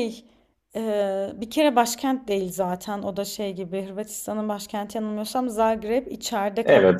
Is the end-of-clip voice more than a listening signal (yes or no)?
no